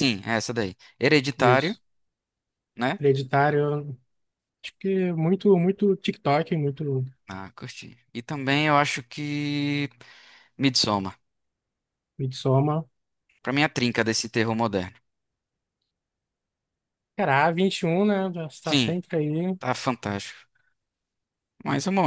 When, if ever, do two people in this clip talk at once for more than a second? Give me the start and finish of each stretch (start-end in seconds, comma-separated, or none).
none